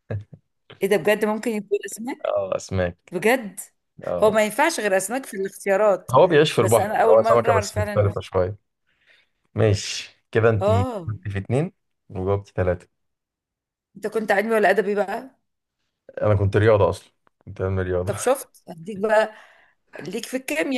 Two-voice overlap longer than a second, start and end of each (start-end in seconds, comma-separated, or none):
6.6-8.1